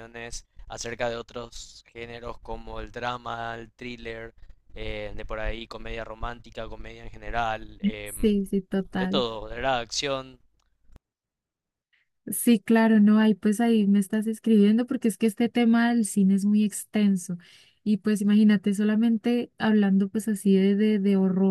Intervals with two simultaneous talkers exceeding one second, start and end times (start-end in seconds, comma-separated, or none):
none